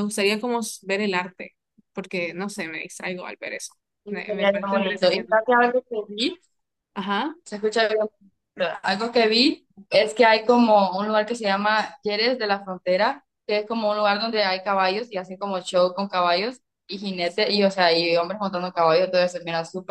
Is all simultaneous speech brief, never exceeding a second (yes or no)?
no